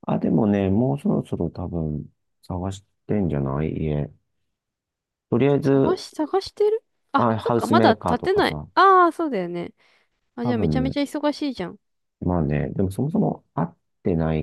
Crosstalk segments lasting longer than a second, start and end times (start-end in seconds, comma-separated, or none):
7.2-8.7